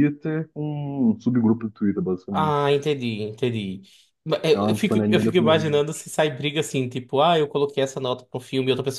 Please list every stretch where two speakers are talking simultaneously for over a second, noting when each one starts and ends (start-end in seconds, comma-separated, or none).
4.5-5.8